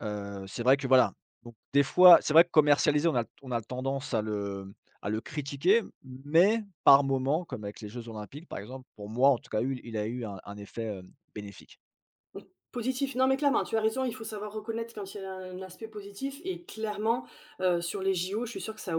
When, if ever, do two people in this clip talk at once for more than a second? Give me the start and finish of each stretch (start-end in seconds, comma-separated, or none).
none